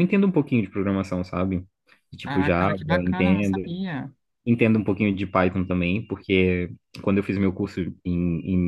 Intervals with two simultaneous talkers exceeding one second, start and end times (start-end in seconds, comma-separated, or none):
2.2-3.6